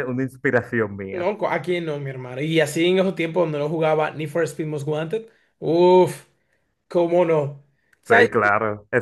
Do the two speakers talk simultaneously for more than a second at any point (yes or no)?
no